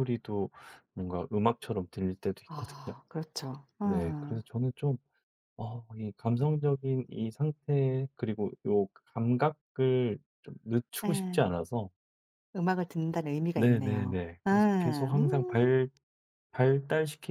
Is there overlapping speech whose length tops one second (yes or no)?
yes